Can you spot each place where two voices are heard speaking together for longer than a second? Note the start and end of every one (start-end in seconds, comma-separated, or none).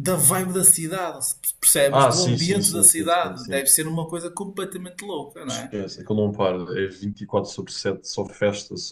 1.9-3.6